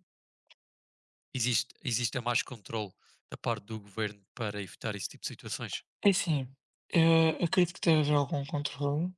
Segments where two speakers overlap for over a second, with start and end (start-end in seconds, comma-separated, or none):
none